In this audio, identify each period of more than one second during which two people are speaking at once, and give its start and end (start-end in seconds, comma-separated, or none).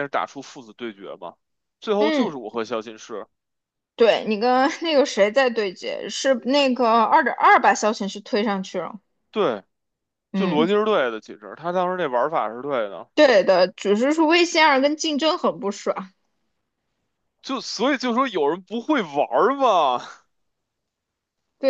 none